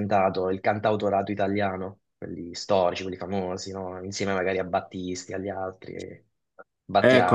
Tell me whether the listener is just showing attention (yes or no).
no